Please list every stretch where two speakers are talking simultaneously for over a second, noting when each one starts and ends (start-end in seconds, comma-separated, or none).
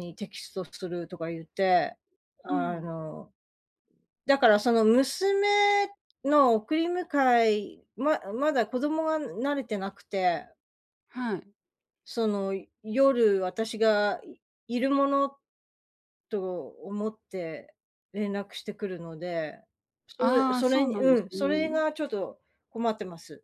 20.2-21.8